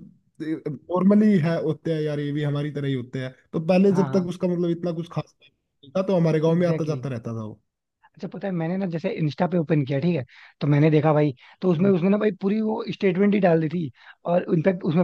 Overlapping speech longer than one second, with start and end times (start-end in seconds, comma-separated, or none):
none